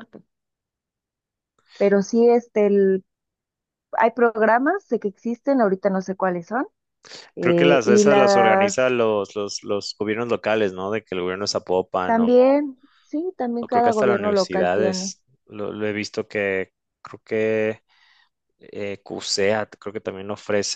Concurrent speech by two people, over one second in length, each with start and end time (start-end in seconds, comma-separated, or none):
7.4-8.9, 13.6-15.2